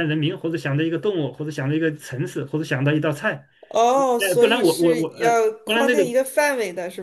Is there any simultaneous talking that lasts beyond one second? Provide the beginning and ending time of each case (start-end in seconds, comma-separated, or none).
4.2-6.0